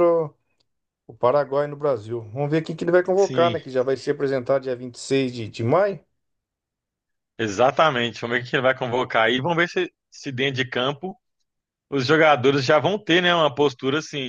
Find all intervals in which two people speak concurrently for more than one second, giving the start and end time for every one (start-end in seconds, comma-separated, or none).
none